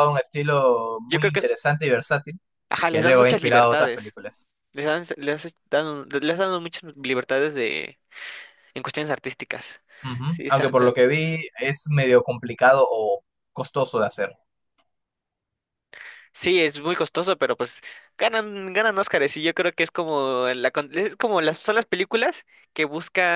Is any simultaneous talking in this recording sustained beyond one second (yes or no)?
yes